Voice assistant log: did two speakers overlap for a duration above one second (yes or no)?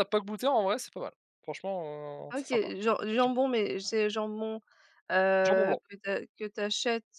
no